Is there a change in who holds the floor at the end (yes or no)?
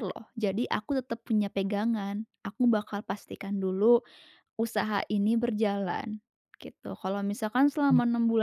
no